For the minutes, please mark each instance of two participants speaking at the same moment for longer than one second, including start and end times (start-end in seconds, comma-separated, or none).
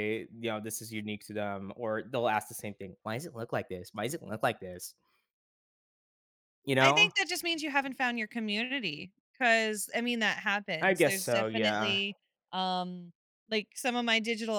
10.8-12.0